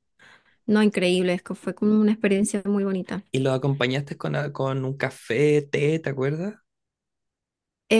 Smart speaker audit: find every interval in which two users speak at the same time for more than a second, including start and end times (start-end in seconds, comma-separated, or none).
none